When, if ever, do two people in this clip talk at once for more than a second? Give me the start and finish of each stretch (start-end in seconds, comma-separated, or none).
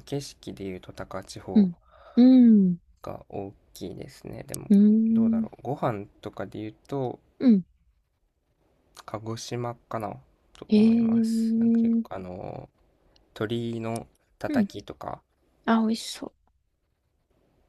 10.7-12.2